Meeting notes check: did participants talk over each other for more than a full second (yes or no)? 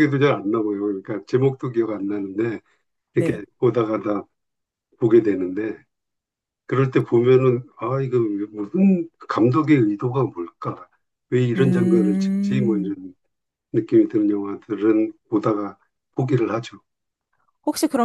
yes